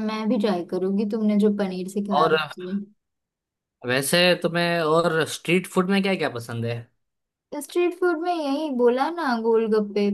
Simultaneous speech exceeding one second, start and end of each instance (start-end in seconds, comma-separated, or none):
none